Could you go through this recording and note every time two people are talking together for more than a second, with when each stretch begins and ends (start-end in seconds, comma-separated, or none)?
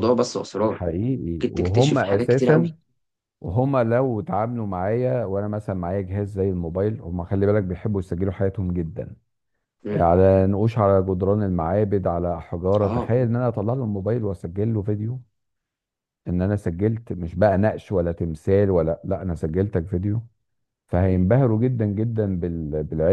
1.4-2.7